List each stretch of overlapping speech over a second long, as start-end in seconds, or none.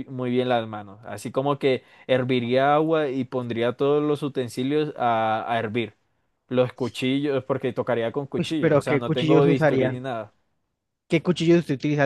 8.4-10.0